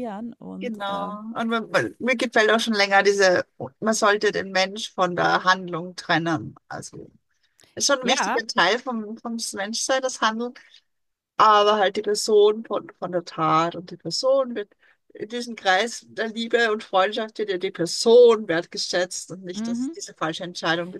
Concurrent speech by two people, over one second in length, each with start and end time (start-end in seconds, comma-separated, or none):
none